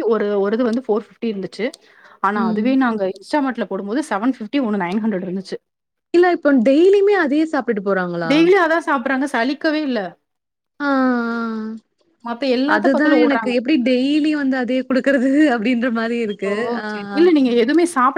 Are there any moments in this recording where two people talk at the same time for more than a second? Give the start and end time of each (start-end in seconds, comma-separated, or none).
none